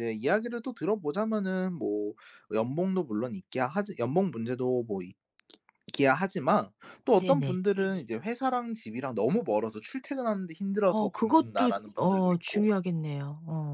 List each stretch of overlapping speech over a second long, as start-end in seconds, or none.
10.8-12.7